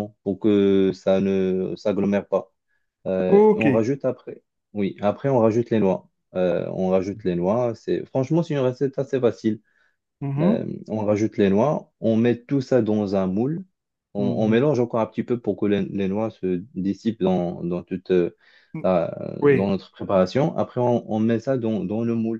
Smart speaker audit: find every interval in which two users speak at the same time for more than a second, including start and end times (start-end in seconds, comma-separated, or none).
none